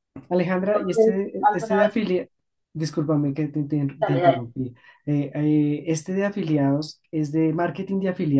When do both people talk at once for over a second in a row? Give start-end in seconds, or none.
0.7-2.0